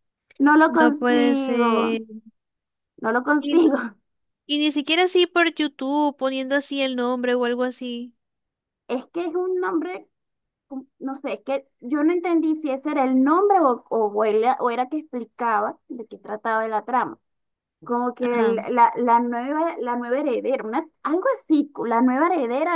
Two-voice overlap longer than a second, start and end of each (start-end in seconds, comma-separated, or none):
0.7-2.0